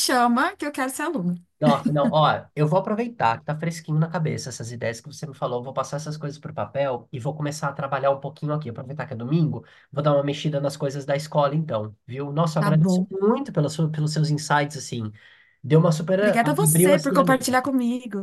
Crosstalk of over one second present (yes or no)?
yes